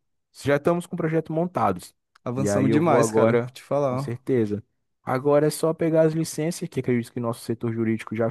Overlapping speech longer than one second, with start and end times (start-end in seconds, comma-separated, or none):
2.4-4.2